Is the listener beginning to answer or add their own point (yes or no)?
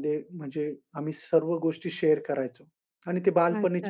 yes